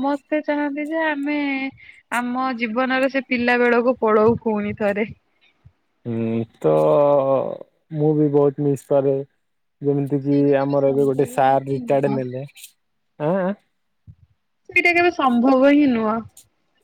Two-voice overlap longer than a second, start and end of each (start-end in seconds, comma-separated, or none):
10.2-12.2